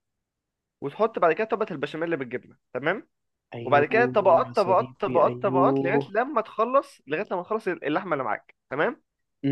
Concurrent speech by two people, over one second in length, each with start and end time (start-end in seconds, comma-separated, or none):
3.6-6.1